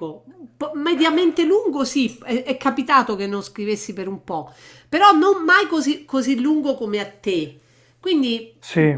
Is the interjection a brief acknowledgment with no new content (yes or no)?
yes